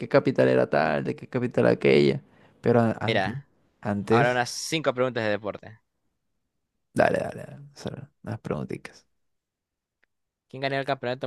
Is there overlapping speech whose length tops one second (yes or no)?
no